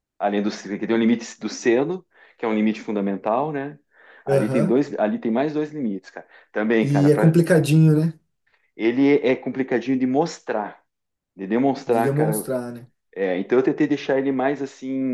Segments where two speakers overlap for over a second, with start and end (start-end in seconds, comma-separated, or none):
none